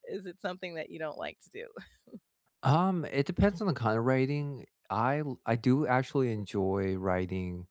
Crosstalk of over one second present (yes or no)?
no